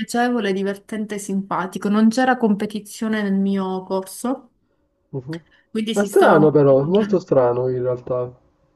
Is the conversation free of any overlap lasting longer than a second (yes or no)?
no